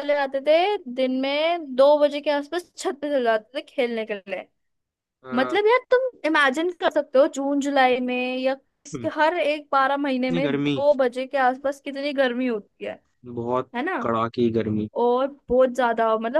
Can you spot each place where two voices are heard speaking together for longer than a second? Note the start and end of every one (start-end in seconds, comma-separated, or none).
none